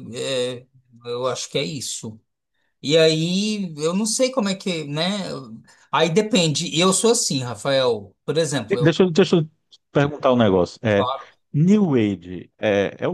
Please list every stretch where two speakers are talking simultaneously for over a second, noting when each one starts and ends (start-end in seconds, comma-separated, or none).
none